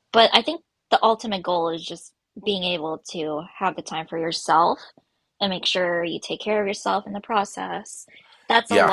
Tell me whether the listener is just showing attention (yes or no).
yes